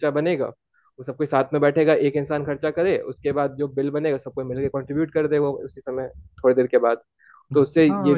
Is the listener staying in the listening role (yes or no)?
no